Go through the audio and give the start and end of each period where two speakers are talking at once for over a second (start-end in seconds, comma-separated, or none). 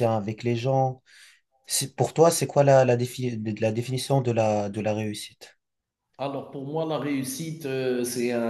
none